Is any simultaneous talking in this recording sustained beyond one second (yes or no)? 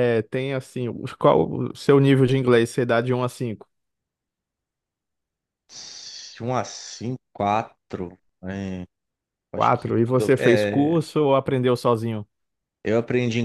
yes